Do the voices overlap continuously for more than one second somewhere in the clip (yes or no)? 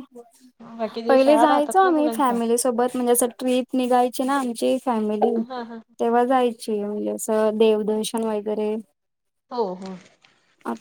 yes